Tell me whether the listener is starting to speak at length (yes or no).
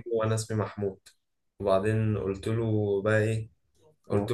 no